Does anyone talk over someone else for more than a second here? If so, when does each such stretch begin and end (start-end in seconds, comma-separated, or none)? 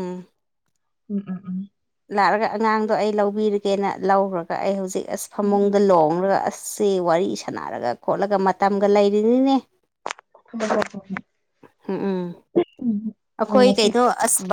none